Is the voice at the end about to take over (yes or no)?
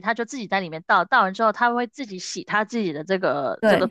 yes